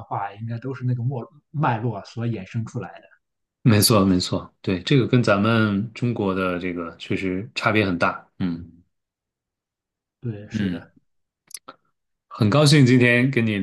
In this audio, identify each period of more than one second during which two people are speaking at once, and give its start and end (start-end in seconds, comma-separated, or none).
none